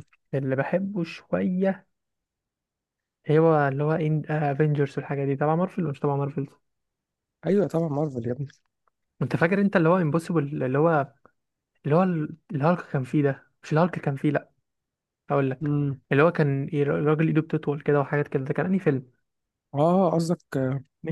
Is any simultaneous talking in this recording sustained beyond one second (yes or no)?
no